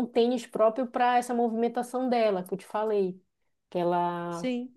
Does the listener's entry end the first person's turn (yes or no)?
no